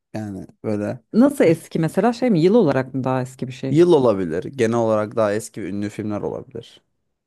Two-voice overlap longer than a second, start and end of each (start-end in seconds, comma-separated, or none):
none